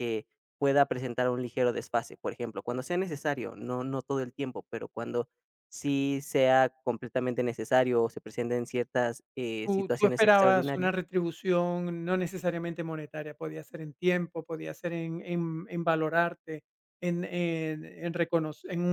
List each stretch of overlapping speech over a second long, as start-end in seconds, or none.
9.7-10.9